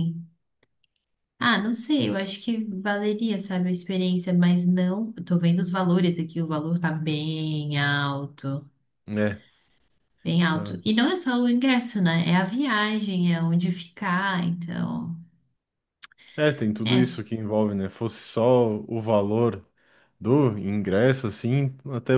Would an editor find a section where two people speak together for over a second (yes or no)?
no